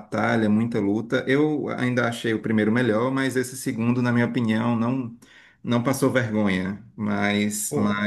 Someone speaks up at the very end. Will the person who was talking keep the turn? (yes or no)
yes